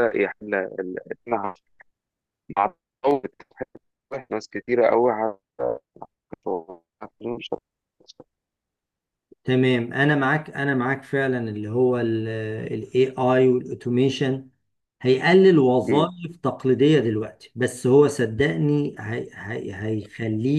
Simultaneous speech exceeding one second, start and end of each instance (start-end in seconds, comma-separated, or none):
none